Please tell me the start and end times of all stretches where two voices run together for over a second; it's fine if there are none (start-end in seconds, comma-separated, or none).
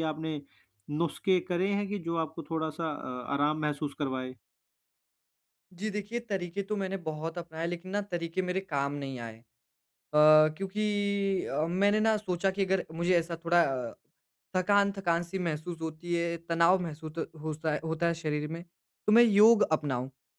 none